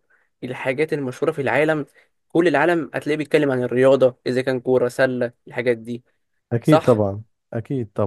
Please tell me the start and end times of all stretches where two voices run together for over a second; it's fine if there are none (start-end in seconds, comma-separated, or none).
none